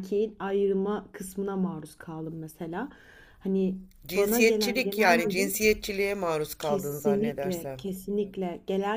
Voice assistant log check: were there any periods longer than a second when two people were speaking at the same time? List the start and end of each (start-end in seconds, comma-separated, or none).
4.2-5.5, 6.6-7.8